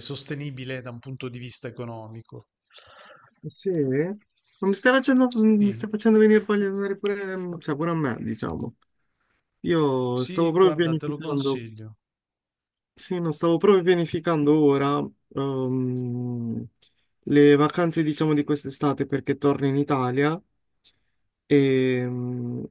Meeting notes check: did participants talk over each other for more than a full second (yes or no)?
yes